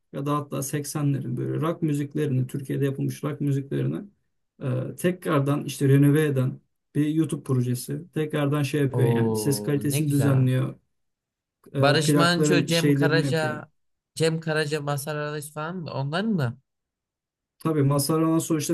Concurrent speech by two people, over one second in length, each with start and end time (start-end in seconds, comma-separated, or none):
8.9-10.5, 11.8-13.6